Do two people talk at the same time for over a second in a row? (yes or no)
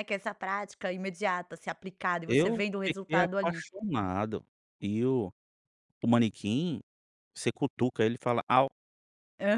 yes